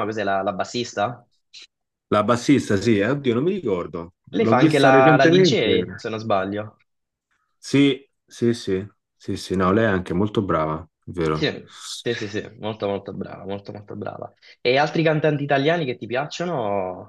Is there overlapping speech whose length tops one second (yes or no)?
yes